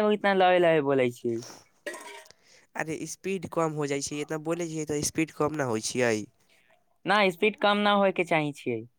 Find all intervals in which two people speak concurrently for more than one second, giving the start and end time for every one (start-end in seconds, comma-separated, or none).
none